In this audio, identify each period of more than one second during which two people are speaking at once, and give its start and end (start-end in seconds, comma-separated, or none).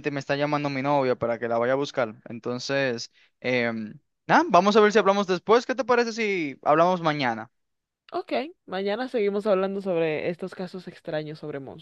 none